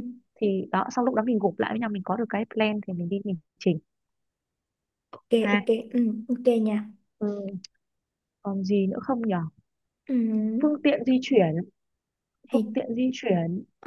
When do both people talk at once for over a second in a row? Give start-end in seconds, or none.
none